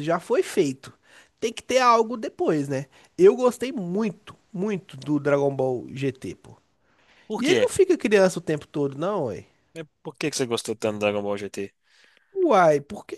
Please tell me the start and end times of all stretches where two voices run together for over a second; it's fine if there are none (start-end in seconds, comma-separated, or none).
none